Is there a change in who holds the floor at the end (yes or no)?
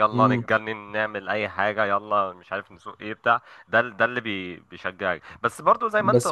yes